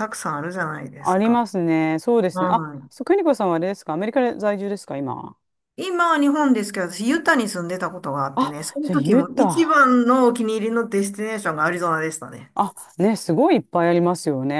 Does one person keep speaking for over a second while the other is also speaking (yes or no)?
yes